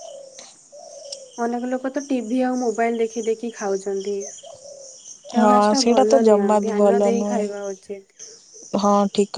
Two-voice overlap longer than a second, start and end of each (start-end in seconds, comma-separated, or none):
5.4-7.4